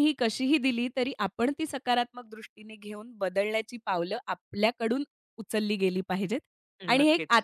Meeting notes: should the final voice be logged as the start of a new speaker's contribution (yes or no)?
no